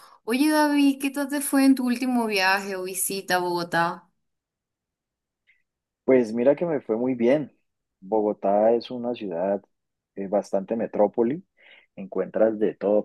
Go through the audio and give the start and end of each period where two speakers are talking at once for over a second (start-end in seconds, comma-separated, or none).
none